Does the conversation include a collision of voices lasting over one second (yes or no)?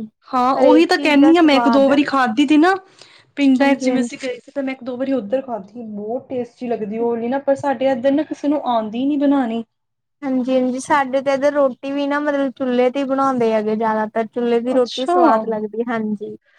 no